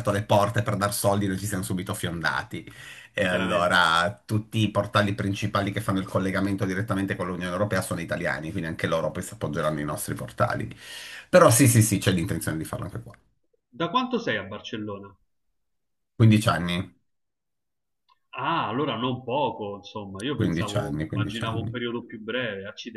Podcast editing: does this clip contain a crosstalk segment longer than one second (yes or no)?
yes